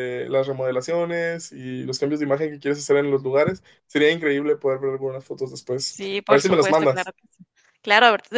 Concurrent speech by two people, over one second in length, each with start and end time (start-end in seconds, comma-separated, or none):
5.7-7.1